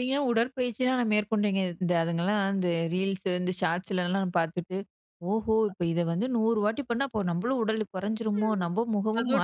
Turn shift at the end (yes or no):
yes